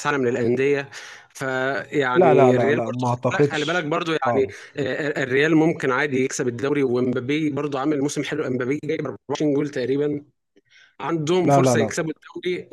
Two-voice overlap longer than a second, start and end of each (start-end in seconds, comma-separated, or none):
2.1-4.5